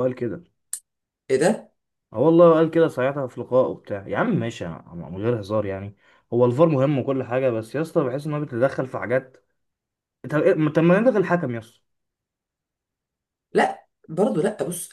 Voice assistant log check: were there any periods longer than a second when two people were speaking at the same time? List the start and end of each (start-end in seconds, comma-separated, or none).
none